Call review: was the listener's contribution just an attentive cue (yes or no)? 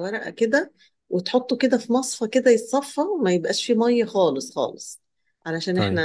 yes